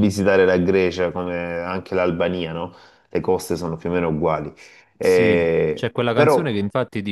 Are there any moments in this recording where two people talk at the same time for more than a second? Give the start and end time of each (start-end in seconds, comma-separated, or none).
5.0-6.5